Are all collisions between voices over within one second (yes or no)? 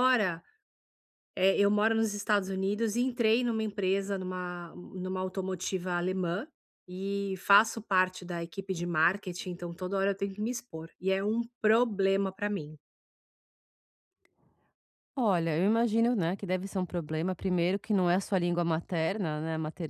yes